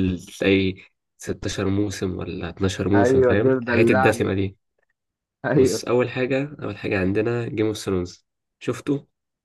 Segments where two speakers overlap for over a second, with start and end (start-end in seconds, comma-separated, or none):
2.9-4.4